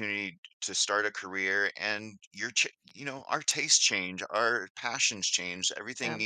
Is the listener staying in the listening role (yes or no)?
yes